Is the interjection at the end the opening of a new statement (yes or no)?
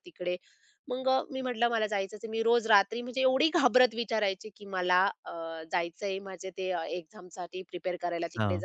no